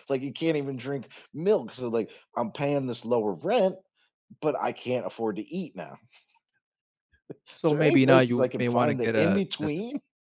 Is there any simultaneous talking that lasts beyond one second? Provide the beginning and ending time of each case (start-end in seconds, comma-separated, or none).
7.6-9.7